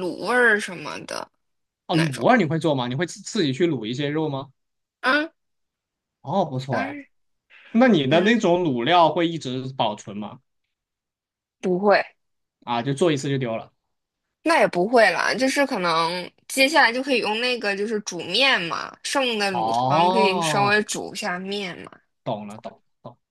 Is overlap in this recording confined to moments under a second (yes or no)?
no